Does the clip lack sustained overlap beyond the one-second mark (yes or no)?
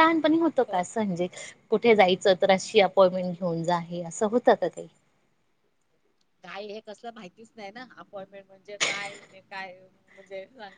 yes